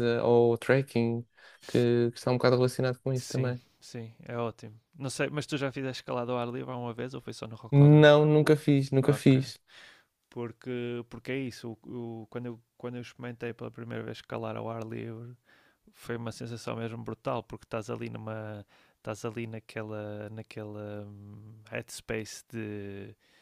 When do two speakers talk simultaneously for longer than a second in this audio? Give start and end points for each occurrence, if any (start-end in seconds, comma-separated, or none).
none